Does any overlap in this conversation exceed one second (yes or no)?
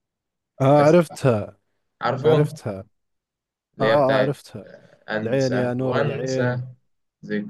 yes